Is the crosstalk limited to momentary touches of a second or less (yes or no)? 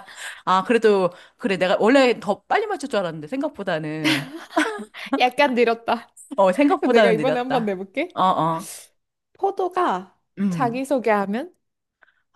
no